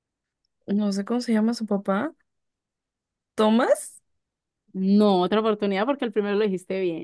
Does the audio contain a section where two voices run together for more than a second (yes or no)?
no